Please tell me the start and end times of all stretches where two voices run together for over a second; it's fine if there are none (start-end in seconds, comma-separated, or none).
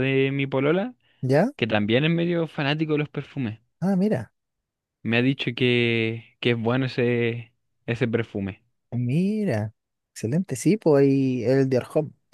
none